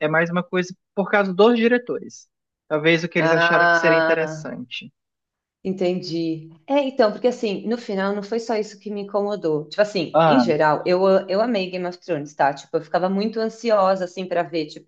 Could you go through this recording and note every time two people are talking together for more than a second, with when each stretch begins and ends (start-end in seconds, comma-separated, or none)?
3.2-4.5